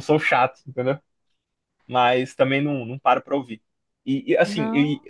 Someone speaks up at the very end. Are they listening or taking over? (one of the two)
listening